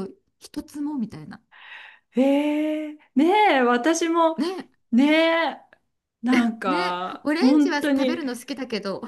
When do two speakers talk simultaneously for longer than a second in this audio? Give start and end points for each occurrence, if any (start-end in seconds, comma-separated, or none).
6.7-8.2